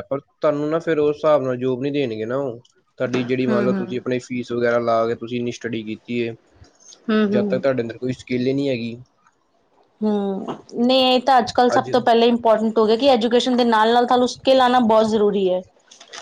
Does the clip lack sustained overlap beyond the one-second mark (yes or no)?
yes